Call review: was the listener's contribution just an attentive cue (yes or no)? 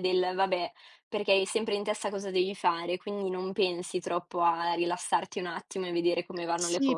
no